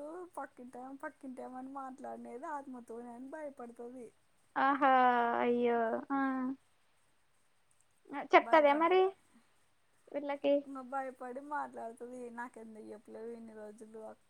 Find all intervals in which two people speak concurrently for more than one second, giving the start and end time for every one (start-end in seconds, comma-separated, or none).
none